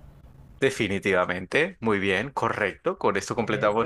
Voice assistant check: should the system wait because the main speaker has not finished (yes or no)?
yes